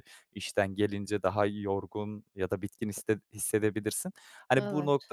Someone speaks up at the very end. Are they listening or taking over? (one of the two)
listening